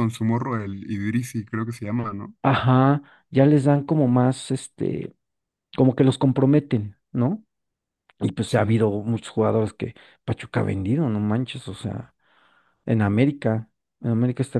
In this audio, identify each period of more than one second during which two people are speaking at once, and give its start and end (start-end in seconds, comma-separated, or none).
none